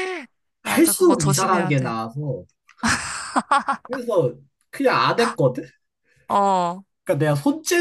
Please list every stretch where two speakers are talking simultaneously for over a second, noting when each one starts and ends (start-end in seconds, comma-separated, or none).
0.6-2.0